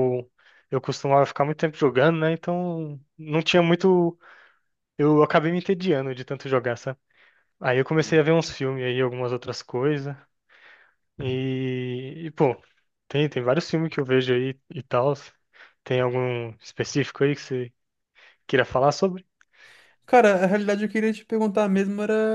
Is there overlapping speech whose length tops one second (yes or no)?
no